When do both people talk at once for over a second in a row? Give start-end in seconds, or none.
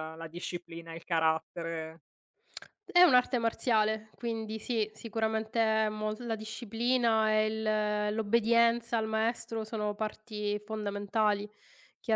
none